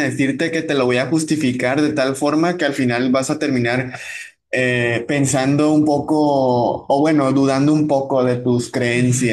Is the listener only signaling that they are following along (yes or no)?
no